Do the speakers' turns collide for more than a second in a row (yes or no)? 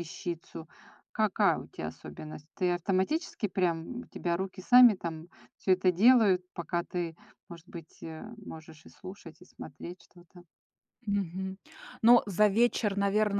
no